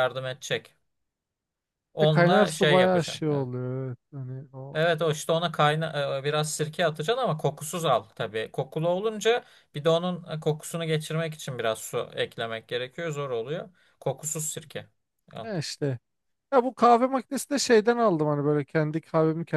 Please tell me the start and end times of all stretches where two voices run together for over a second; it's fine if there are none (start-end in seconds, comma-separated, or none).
2.0-3.5